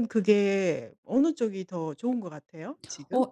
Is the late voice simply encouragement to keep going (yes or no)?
no